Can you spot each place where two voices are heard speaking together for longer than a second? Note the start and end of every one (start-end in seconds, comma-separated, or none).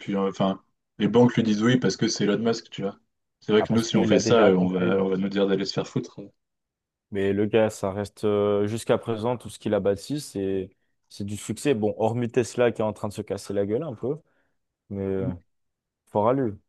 3.6-5.0